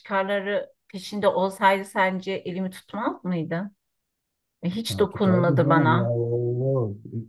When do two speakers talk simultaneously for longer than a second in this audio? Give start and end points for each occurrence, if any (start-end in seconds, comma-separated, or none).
4.9-6.2